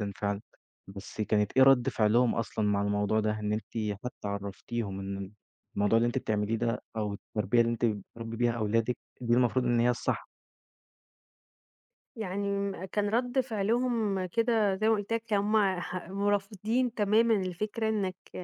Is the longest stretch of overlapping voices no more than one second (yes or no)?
yes